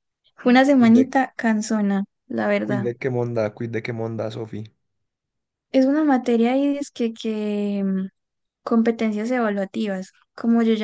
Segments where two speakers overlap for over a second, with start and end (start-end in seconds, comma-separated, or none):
none